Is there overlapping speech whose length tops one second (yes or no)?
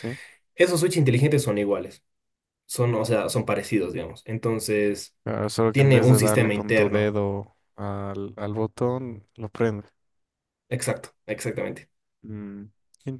yes